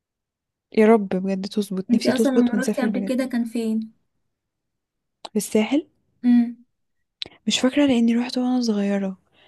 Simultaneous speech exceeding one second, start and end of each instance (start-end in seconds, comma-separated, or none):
1.9-3.1